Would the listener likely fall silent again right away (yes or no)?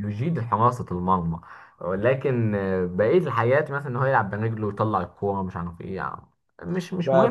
no